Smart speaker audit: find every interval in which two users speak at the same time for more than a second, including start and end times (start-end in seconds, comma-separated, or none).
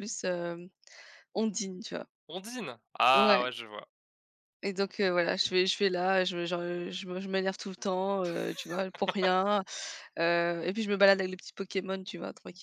none